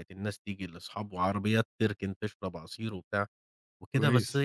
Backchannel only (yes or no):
yes